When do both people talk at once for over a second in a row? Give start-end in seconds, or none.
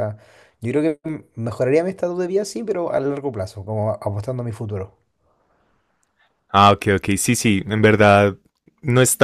none